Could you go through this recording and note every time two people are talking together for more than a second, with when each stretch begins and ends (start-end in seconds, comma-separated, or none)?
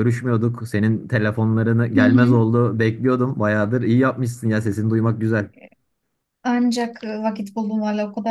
none